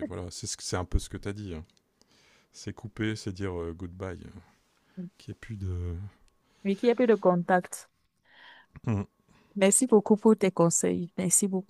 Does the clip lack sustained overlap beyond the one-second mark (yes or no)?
yes